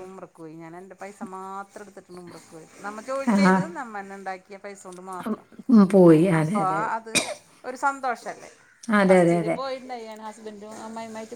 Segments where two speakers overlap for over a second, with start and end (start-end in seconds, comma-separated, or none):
none